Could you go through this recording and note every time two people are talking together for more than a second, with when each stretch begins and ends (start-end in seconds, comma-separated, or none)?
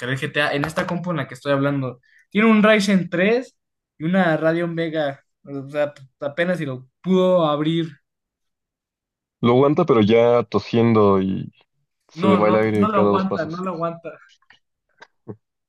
12.1-13.6